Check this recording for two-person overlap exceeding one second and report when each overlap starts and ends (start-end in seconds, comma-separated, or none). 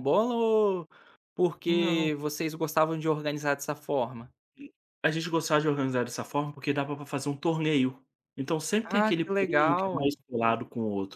8.8-10.1